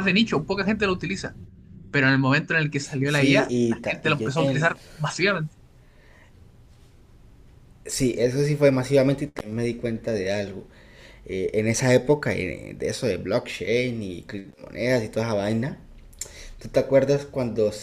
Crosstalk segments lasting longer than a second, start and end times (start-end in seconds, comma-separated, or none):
3.0-4.8